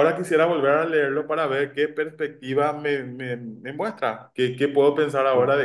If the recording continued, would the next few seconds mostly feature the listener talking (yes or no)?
no